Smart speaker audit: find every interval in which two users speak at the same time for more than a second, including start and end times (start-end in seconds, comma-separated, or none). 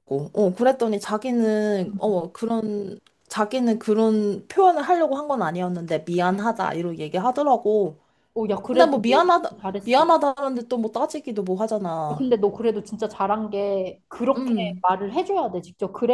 8.7-10.1